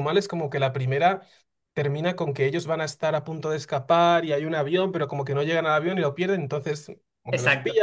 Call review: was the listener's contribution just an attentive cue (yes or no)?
yes